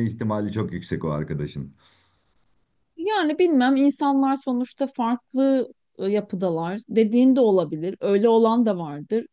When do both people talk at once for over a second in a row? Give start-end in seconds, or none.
none